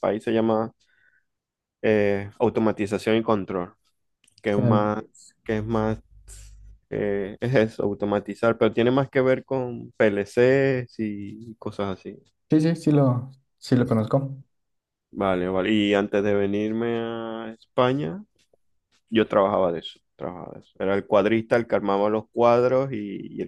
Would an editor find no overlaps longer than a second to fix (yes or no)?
yes